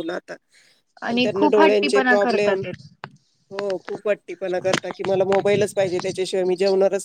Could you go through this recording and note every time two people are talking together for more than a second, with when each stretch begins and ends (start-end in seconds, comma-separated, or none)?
1.2-2.6